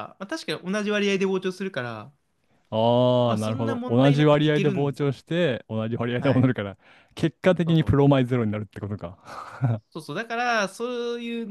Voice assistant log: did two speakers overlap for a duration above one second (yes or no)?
yes